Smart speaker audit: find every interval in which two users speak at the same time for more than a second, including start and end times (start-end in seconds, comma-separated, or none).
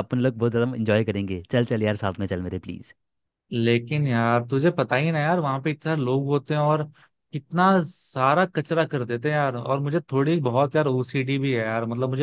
none